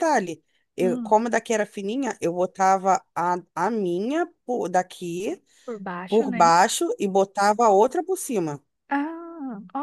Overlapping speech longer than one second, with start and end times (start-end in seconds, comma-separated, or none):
none